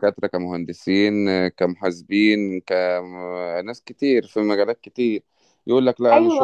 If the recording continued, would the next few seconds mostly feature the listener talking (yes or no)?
yes